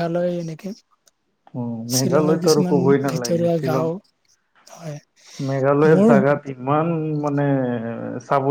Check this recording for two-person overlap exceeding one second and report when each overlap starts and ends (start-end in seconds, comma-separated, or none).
1.9-3.9